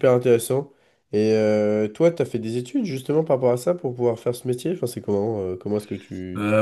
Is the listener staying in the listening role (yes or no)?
no